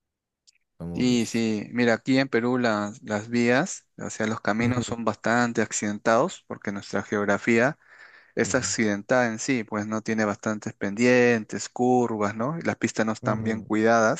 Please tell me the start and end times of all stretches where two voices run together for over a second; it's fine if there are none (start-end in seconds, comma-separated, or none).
none